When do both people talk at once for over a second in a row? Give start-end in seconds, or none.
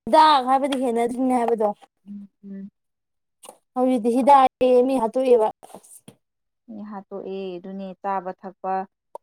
none